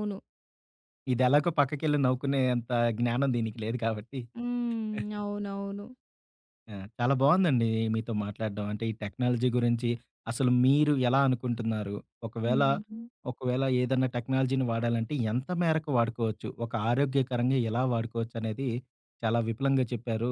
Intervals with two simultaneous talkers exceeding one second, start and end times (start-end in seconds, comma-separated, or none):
none